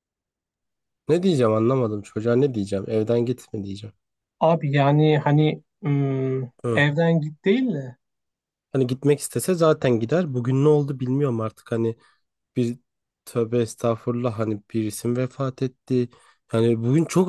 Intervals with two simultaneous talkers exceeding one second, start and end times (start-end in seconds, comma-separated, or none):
none